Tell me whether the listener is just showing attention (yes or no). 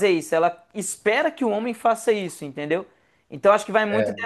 yes